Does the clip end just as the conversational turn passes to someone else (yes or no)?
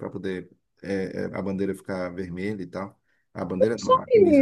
yes